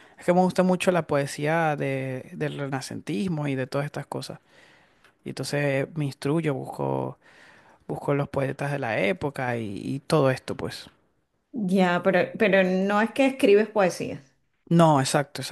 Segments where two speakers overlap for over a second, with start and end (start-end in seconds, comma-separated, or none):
none